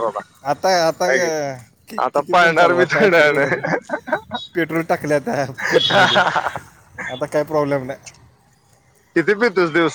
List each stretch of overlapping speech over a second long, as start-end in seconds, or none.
1.9-3.5